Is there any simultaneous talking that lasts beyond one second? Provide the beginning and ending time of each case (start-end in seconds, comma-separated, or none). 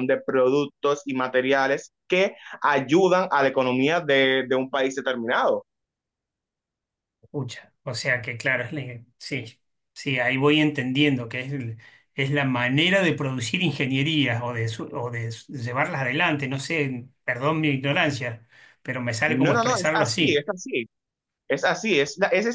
19.3-20.5